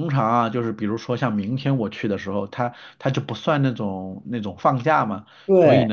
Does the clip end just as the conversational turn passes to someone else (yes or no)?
no